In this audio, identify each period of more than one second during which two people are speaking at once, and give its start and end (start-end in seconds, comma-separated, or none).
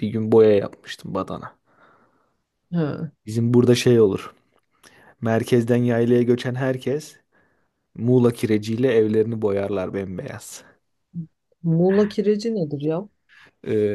none